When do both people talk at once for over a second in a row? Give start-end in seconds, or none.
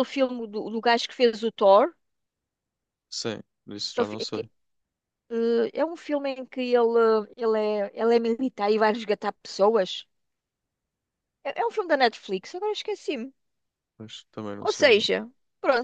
none